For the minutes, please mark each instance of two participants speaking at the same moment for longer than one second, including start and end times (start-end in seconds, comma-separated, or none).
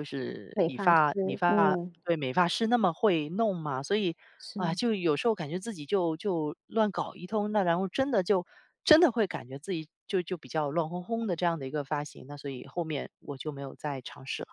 0.5-1.9